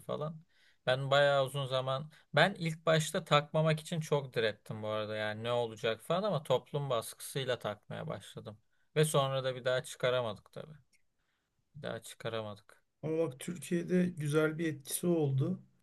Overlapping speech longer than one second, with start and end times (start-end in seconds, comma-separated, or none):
none